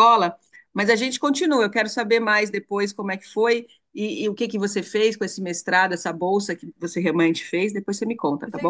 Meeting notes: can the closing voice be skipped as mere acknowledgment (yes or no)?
no